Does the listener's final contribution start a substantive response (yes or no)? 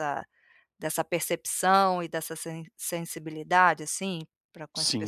yes